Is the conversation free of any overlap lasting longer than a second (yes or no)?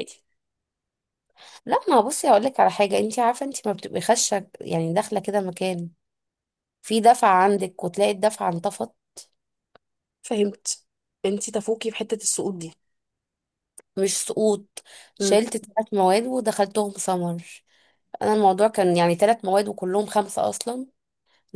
yes